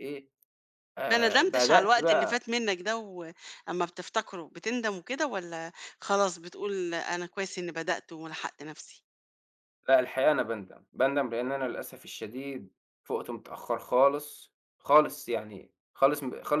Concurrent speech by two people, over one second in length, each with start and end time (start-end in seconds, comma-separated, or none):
1.1-2.4